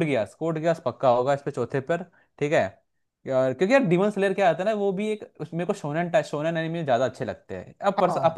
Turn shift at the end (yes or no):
no